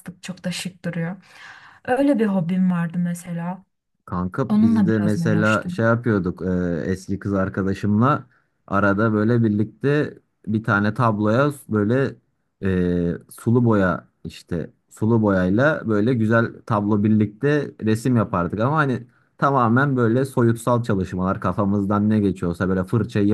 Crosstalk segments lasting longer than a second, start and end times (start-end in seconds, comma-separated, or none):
4.5-5.9